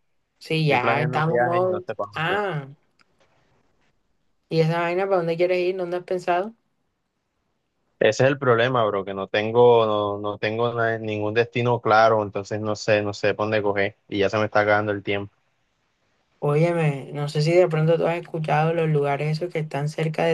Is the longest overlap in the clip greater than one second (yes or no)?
yes